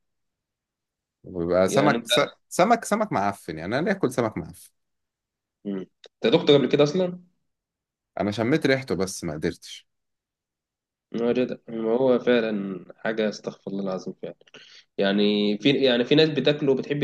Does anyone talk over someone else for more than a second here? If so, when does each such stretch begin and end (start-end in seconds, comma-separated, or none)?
none